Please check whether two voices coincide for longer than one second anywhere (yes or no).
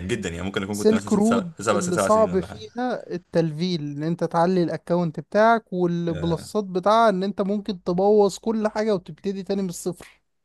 yes